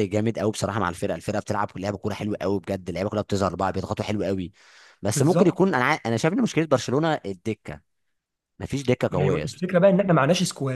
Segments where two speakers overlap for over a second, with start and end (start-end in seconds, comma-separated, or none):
none